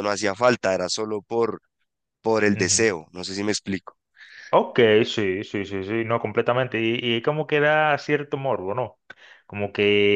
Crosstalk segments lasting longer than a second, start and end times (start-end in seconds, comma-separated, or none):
none